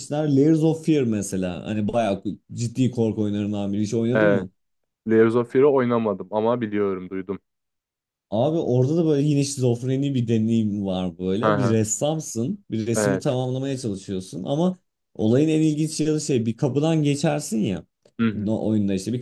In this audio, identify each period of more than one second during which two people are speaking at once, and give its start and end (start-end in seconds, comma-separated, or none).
none